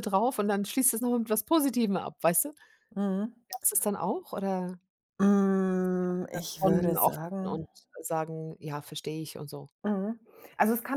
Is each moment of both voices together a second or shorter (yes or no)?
no